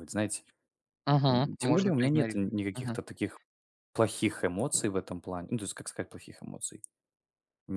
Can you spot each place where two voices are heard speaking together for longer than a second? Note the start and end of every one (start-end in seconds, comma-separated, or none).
1.3-3.0